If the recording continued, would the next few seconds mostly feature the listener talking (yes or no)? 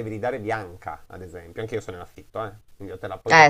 no